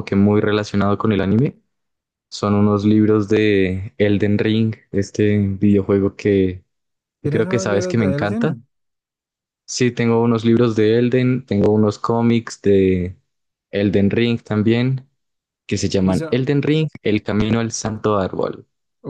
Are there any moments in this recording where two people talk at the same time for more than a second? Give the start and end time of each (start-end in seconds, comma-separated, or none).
7.2-8.6